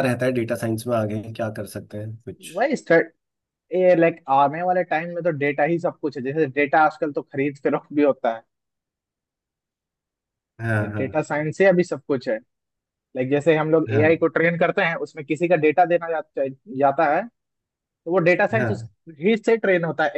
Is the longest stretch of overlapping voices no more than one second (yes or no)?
yes